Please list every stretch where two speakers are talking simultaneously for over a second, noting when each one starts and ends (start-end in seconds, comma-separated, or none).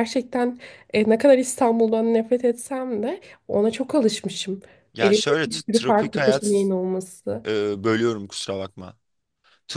5.0-6.7